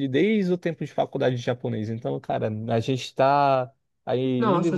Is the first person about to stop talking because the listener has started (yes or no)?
no